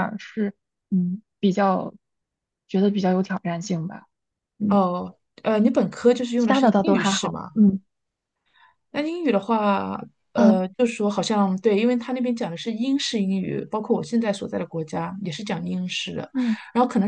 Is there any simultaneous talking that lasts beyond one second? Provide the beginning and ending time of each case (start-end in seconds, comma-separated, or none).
6.4-7.6